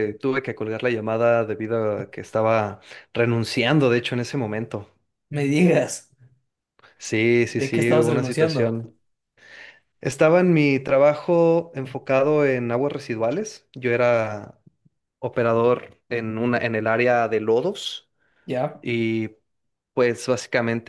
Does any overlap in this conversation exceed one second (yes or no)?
yes